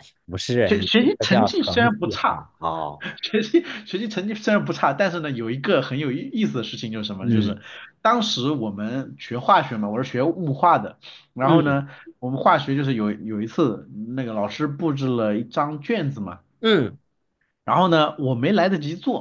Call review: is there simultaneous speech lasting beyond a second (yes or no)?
yes